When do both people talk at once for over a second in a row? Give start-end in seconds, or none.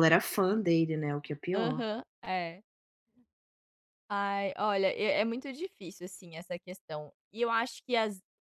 none